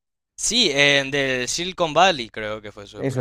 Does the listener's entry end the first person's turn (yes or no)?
yes